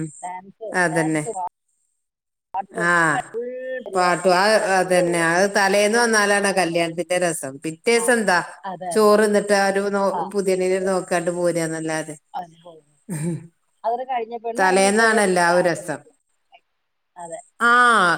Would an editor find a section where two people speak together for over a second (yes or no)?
yes